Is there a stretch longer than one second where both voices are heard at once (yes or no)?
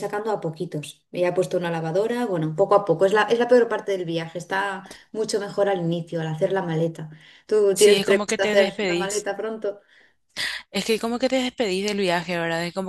yes